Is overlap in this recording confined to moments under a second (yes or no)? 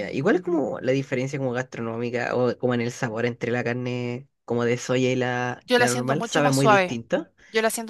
no